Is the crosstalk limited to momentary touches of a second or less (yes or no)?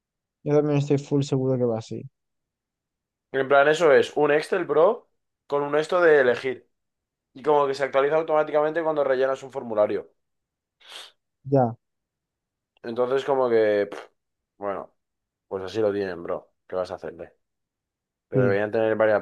yes